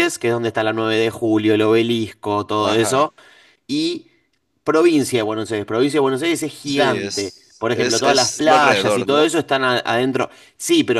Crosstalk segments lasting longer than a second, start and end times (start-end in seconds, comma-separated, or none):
6.6-9.3